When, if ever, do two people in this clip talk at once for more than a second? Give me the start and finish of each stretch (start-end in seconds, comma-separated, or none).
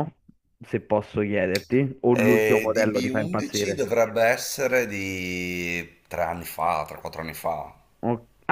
2.3-3.9